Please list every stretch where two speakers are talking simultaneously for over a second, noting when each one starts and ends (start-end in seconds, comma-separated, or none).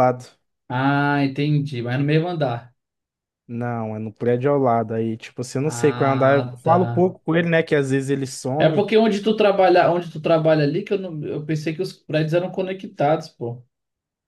5.7-7.1